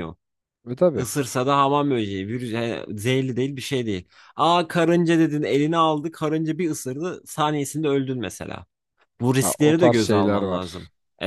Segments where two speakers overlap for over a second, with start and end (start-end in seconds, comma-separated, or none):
9.4-10.7